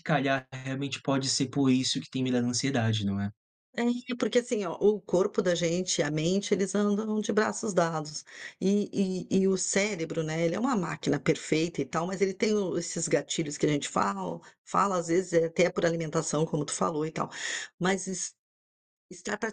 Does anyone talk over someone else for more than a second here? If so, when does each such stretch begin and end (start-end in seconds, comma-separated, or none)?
none